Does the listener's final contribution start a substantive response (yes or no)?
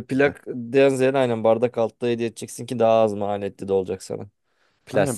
yes